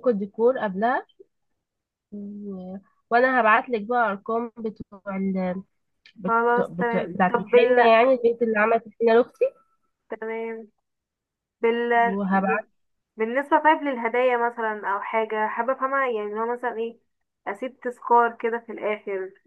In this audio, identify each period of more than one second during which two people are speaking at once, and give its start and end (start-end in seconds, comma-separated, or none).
6.2-7.8